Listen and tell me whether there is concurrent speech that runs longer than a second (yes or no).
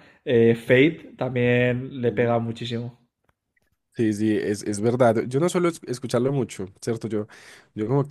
no